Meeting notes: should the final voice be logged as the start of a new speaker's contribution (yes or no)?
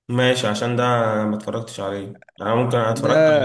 no